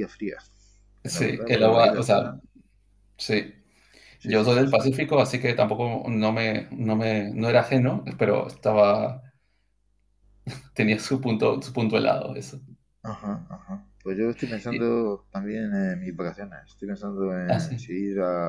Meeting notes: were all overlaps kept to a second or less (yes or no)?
no